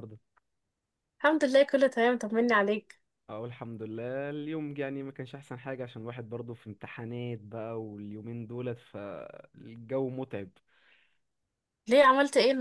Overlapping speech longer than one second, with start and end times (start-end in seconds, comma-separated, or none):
none